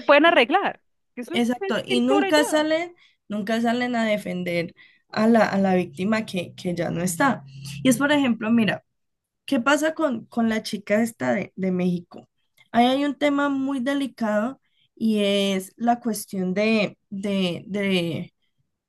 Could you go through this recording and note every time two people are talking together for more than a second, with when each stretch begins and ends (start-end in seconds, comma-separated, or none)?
1.3-2.6